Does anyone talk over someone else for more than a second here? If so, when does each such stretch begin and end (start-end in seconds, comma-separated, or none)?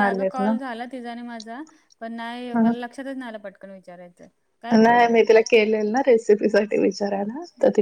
none